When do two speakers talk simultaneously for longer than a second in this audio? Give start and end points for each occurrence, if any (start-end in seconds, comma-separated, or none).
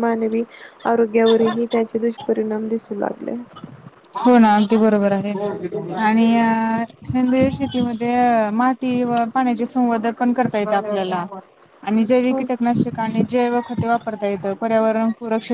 none